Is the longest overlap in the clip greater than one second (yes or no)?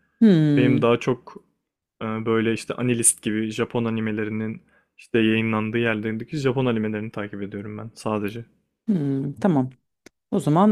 no